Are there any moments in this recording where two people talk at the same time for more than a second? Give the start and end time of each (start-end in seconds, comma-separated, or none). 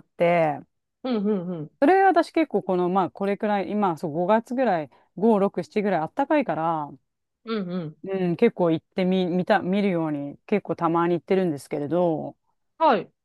none